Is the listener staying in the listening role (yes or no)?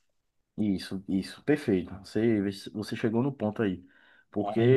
yes